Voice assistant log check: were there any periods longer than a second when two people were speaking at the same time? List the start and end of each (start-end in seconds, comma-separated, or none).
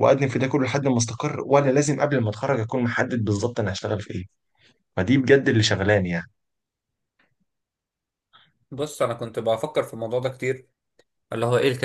none